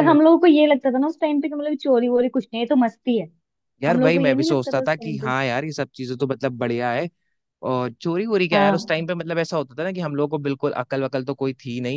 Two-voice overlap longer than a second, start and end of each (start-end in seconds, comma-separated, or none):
3.9-5.3